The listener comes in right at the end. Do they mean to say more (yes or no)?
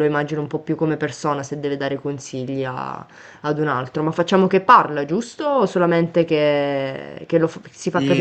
yes